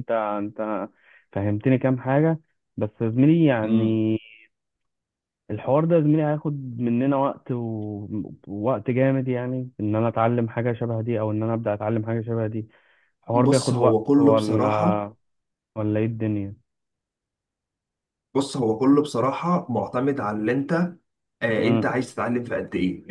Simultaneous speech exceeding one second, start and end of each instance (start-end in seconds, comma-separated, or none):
13.3-15.1